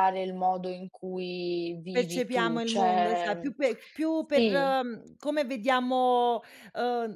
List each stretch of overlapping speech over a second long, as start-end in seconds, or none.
1.9-3.5